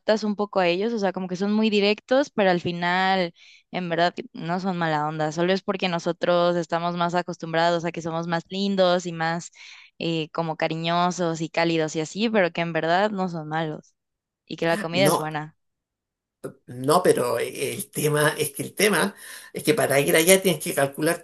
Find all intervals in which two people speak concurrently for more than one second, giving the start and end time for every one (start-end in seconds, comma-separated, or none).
none